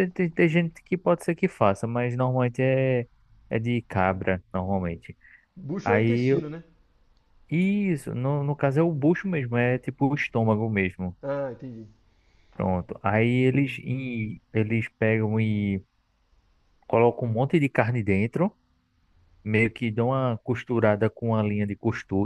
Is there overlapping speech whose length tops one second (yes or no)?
no